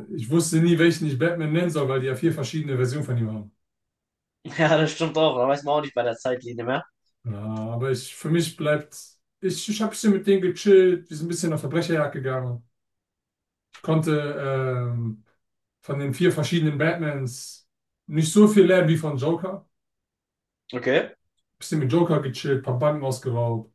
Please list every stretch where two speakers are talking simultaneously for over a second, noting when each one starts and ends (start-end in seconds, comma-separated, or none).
none